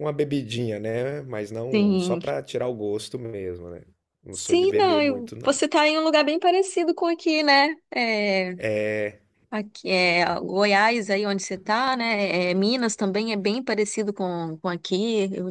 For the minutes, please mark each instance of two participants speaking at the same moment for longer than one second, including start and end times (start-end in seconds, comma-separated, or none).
4.3-5.6